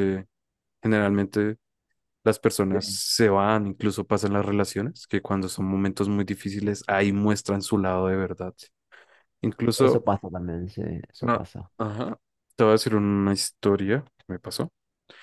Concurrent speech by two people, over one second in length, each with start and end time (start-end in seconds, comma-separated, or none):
none